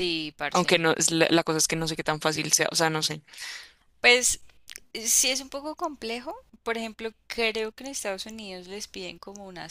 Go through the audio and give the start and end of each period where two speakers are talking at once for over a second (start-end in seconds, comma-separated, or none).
none